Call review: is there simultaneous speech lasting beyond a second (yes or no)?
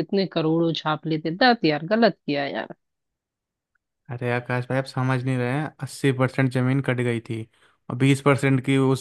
no